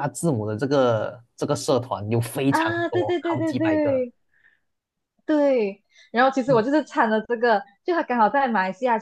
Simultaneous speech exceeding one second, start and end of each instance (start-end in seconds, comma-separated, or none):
2.5-4.0